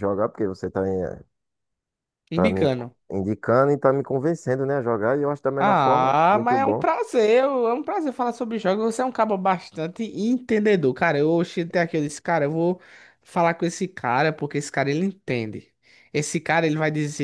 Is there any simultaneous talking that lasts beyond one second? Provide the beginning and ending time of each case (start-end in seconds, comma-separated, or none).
5.6-6.8